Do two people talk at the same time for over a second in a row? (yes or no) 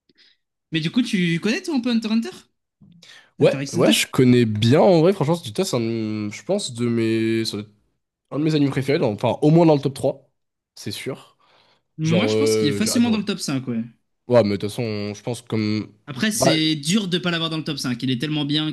yes